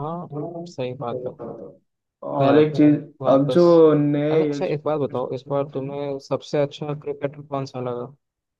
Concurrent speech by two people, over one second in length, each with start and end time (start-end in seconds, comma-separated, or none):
none